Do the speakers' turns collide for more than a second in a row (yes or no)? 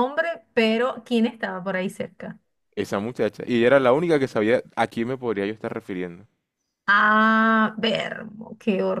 no